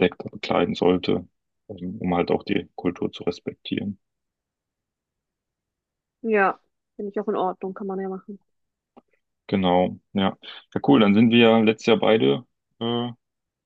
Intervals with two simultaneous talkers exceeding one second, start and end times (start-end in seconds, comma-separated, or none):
none